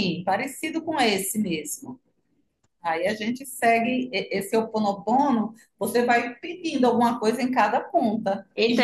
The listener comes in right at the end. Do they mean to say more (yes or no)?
yes